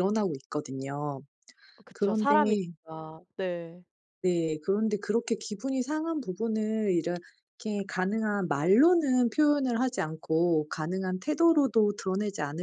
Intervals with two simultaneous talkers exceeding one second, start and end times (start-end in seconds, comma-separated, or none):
none